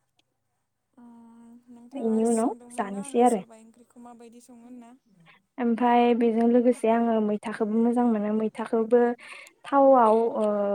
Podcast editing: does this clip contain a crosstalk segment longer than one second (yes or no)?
no